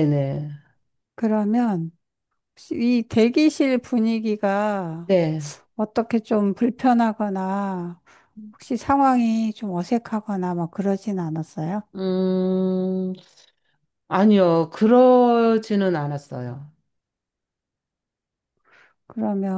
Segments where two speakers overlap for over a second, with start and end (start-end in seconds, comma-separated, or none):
none